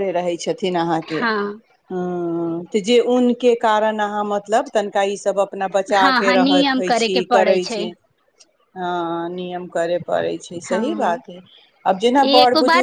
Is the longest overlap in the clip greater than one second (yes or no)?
yes